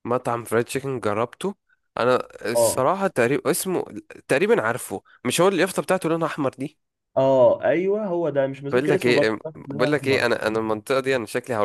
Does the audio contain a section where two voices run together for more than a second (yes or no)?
yes